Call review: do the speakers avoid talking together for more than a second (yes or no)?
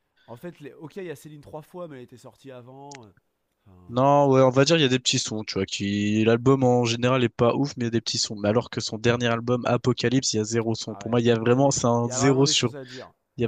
no